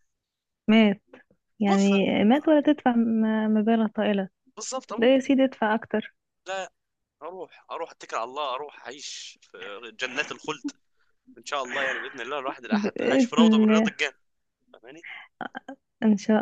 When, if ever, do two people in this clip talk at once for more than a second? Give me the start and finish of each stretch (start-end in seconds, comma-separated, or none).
12.7-13.9